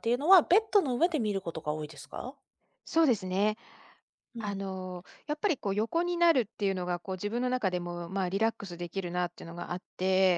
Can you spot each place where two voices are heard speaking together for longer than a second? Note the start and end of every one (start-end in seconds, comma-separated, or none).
none